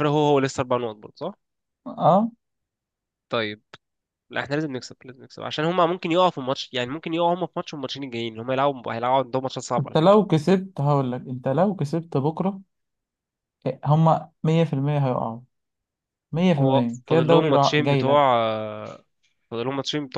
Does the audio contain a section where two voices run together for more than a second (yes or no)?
yes